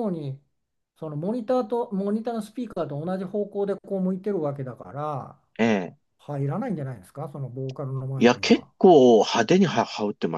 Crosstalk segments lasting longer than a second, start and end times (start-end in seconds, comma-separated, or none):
none